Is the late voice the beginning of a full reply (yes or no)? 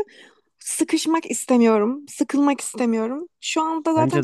no